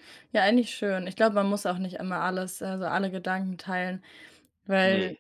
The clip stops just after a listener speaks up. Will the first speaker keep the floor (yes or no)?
yes